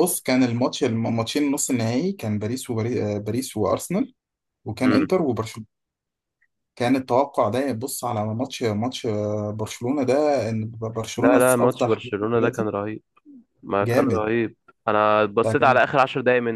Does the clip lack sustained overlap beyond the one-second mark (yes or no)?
no